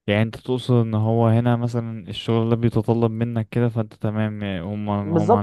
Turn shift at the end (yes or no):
yes